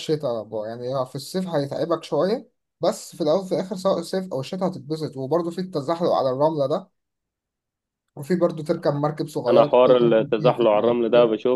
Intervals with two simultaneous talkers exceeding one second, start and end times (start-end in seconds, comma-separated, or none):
9.5-11.0